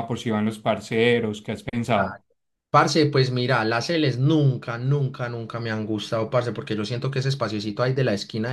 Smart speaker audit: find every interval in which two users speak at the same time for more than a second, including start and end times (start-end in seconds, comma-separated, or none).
none